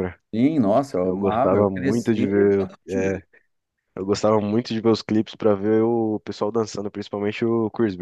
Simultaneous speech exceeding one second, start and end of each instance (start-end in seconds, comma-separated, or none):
1.0-3.2